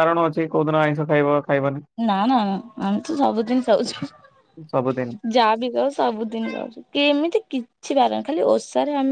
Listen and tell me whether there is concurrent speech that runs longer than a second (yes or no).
no